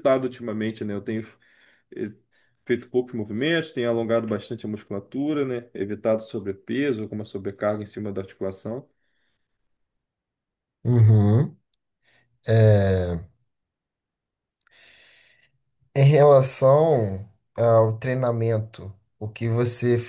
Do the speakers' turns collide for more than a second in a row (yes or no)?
no